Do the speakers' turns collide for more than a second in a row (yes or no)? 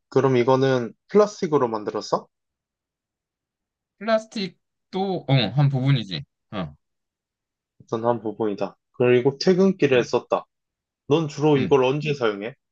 no